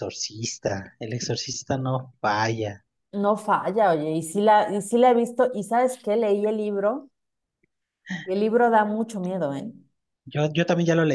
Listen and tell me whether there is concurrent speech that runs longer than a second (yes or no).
no